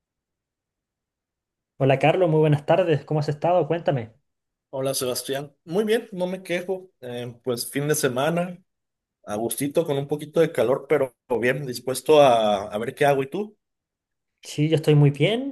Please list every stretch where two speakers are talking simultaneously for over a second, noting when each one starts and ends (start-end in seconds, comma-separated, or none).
none